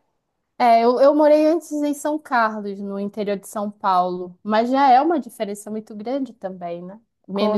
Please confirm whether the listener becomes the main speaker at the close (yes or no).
no